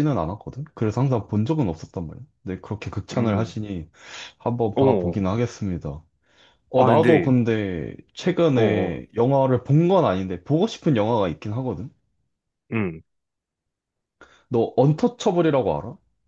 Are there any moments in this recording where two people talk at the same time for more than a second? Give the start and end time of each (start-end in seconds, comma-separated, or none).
none